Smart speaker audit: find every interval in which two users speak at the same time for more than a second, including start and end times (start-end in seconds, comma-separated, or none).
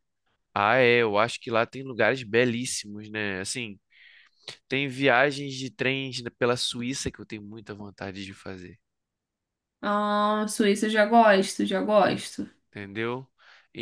none